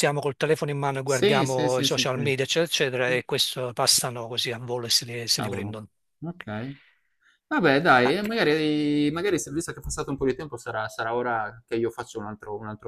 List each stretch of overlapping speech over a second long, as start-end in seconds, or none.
1.1-2.3